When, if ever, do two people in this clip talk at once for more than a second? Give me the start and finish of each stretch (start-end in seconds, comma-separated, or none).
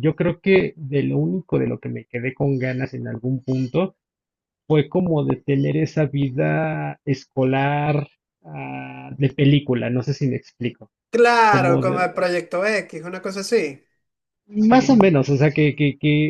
none